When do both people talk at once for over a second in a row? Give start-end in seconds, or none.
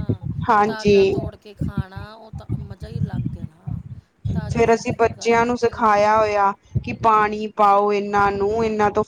4.5-6.1